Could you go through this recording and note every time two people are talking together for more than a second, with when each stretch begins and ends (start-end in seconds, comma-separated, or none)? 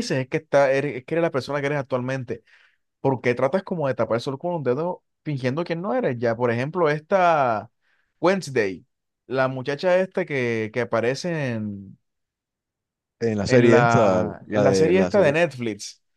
13.4-15.3